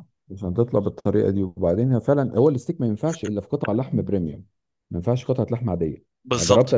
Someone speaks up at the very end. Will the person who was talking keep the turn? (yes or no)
yes